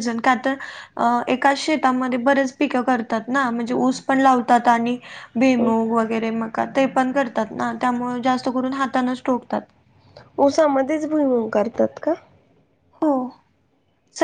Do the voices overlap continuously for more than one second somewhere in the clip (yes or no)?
no